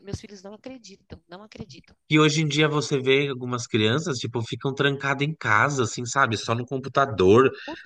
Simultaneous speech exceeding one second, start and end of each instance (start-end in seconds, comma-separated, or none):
none